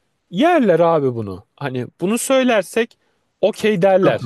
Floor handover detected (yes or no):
yes